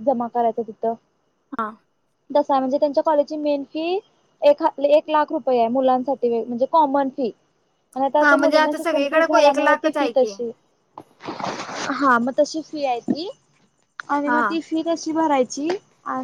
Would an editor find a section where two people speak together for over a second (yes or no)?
yes